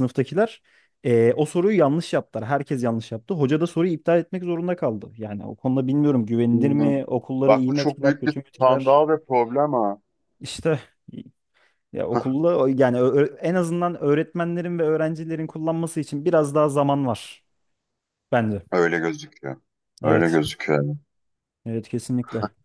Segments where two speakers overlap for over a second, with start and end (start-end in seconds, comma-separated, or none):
7.5-9.0